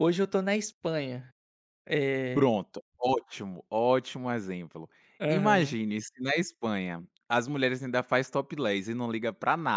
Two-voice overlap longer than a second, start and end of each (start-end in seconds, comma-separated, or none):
none